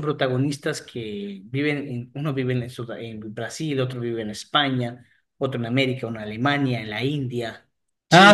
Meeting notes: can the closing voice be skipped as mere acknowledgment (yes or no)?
no